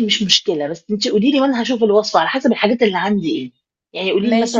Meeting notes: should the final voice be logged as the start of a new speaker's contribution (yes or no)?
no